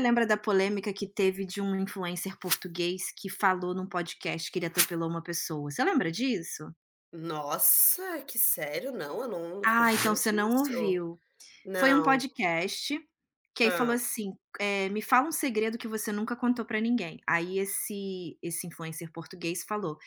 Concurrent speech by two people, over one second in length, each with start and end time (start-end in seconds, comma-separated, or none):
9.6-11.0